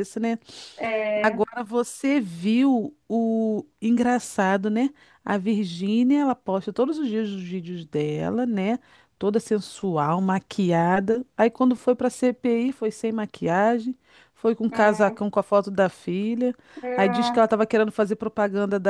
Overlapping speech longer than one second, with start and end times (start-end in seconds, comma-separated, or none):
none